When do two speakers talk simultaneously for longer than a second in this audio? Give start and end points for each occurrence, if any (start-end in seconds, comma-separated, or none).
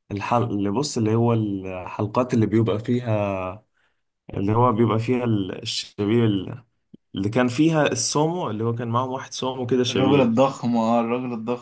none